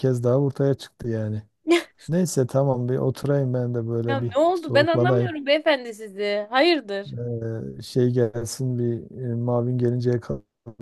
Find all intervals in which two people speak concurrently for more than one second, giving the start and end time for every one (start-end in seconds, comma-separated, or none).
4.1-5.3